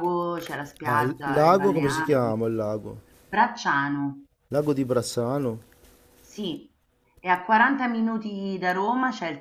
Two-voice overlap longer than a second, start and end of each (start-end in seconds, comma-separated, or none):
0.8-2.4